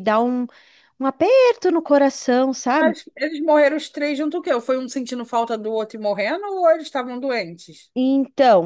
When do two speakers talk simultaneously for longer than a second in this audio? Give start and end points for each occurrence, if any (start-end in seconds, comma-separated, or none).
none